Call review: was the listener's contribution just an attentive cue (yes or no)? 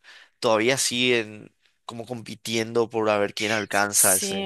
no